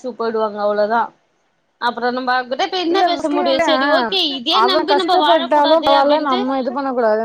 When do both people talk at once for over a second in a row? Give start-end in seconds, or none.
4.7-6.4